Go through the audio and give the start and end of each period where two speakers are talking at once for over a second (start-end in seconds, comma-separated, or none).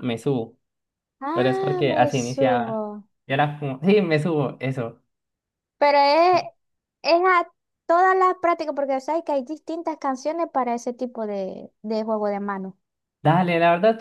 1.3-2.8